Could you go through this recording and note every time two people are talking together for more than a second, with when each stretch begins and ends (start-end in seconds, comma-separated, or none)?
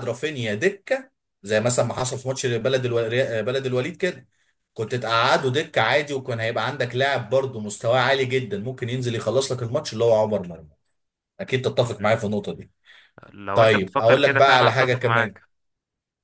13.5-15.3